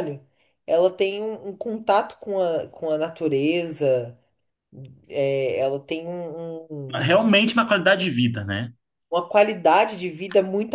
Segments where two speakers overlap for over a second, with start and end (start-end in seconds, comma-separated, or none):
none